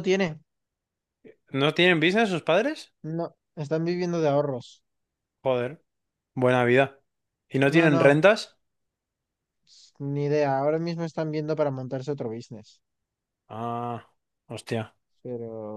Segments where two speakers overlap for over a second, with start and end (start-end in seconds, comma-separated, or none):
none